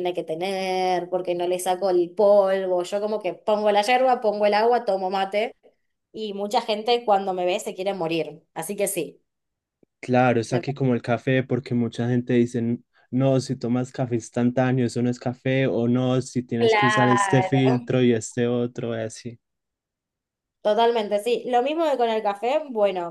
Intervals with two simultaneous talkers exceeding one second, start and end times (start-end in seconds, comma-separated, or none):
16.6-17.9